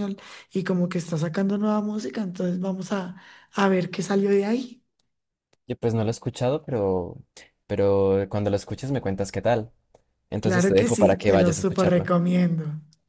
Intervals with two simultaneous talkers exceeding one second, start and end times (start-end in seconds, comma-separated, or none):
10.4-12.1